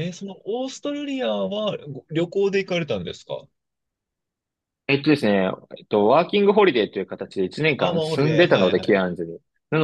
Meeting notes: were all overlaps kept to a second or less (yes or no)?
no